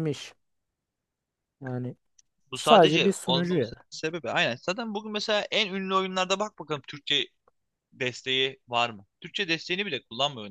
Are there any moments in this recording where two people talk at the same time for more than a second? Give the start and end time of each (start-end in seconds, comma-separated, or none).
2.5-3.8